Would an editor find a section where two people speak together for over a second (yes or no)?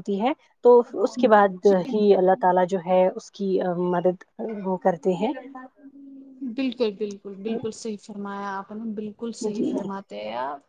no